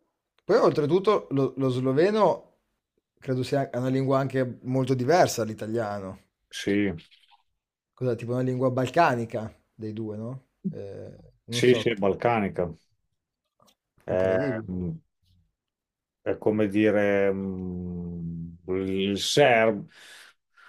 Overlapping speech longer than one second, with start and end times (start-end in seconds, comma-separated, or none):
none